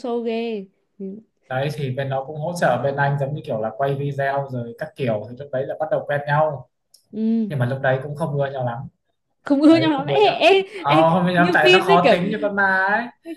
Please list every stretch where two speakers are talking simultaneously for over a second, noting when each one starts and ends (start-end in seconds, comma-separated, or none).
9.7-12.2